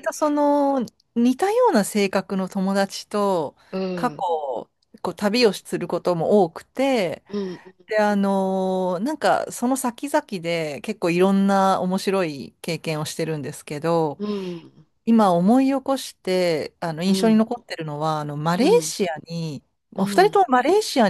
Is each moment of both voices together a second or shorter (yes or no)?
yes